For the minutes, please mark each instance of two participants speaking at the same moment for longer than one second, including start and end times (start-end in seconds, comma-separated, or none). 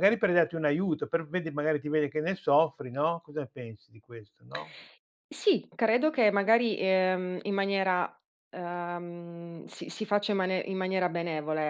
none